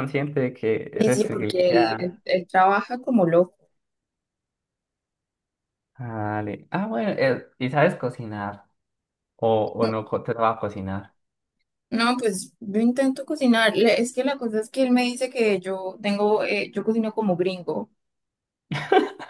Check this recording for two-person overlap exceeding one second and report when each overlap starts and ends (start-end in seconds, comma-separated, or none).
0.9-2.1